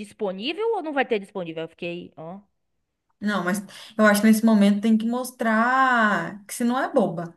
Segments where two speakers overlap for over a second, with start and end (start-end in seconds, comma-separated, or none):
none